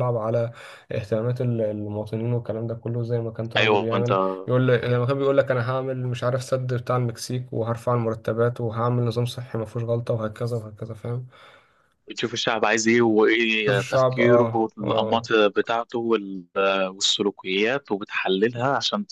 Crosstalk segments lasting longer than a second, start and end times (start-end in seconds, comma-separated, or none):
13.7-15.3